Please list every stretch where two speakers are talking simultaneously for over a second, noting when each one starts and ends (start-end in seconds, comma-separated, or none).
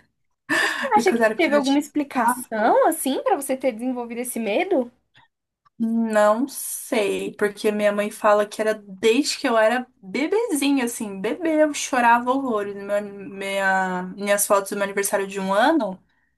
1.0-2.8